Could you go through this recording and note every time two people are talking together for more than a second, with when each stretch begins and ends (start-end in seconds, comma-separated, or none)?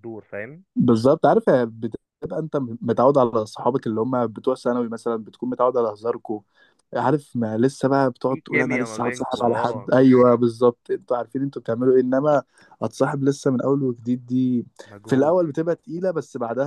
8.3-9.9